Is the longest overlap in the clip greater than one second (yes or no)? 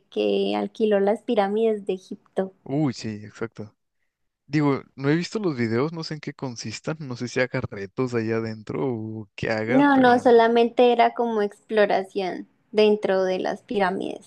no